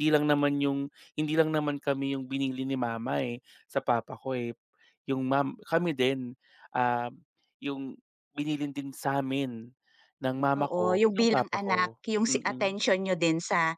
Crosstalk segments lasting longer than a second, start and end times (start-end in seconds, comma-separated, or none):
10.6-12.7